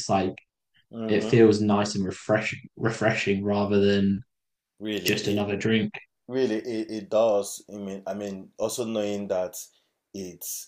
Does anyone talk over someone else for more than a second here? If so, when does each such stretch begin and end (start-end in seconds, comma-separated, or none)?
none